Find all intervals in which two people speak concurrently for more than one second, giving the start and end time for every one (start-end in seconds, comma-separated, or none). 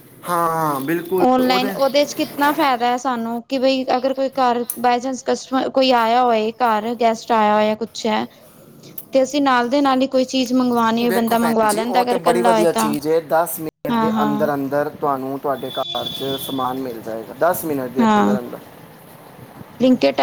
11.1-12.9